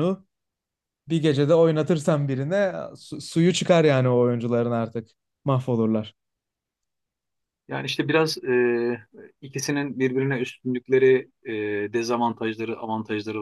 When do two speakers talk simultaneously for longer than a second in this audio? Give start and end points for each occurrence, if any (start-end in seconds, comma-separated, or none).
none